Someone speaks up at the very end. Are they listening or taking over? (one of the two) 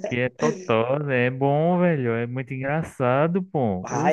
taking over